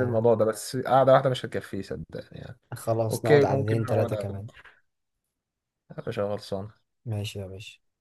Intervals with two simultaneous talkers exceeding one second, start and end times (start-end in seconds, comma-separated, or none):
3.1-4.5